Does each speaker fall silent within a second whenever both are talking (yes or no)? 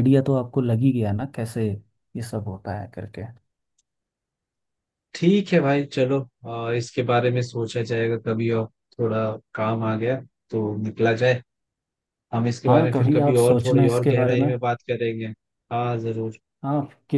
no